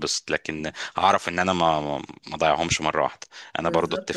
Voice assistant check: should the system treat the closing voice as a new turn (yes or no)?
yes